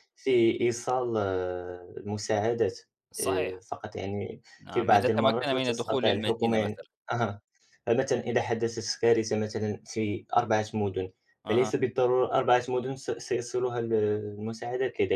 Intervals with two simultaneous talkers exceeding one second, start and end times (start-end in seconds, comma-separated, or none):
4.6-6.8